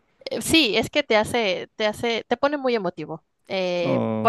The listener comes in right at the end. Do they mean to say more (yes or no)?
no